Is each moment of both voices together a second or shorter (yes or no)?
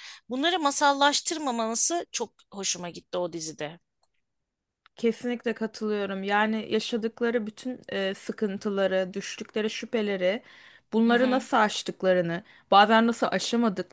yes